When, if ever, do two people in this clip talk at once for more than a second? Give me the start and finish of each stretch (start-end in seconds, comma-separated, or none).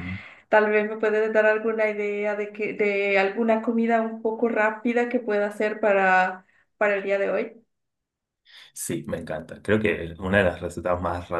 none